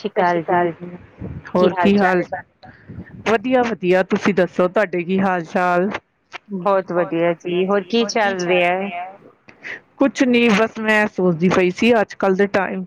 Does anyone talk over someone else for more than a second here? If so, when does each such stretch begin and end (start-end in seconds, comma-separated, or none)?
none